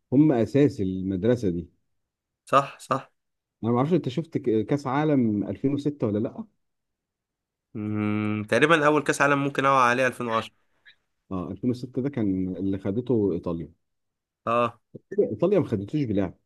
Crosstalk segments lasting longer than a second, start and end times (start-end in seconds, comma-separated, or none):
none